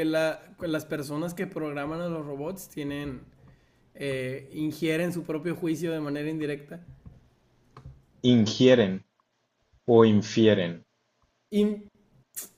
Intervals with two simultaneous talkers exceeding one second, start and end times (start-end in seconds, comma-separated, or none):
none